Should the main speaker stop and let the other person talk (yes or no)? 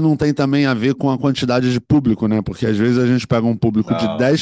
no